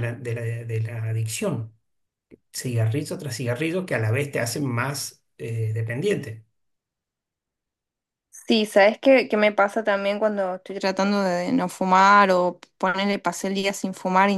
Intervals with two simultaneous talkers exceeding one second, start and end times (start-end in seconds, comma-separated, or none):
none